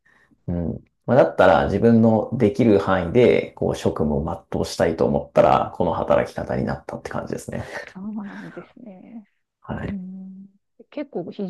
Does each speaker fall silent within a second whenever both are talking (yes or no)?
yes